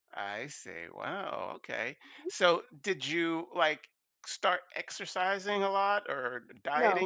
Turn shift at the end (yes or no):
no